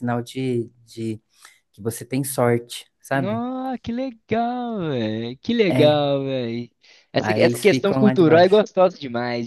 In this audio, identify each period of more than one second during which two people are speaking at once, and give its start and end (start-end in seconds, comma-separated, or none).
7.2-8.6